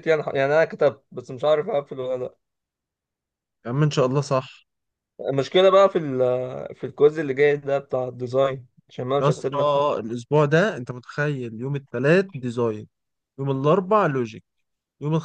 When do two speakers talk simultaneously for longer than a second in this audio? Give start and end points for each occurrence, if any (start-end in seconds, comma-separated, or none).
none